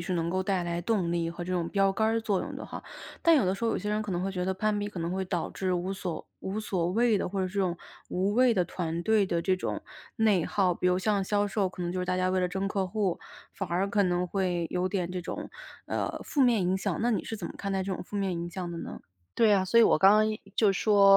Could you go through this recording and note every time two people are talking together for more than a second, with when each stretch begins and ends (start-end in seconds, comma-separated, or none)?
none